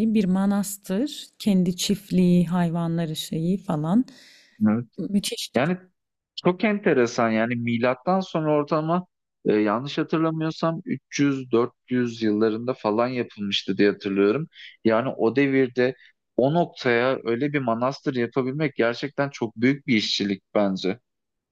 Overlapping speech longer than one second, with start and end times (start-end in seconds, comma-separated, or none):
none